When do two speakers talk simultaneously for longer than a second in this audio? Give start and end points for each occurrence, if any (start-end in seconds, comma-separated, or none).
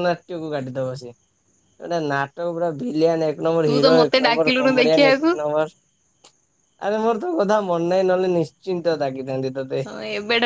3.6-5.3